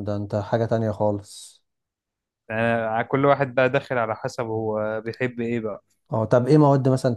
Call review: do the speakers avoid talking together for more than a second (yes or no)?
yes